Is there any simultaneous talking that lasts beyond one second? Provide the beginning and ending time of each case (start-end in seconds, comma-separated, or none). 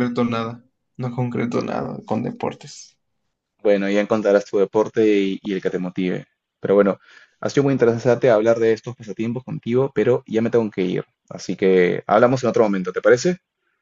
none